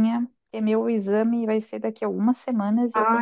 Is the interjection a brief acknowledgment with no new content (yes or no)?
no